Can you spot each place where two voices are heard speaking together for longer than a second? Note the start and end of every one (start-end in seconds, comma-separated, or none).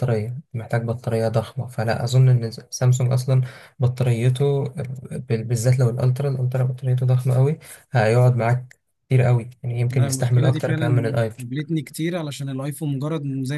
9.9-11.4